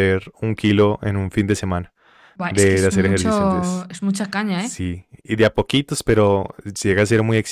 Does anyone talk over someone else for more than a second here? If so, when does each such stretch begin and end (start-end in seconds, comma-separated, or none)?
2.5-3.9